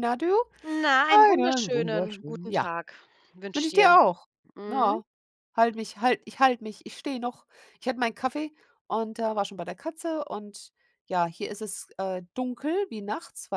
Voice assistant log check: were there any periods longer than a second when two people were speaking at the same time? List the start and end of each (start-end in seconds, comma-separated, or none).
1.1-2.7